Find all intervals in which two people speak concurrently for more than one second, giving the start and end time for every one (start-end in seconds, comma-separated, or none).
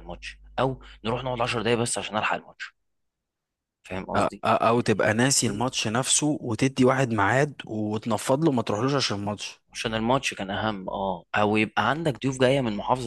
none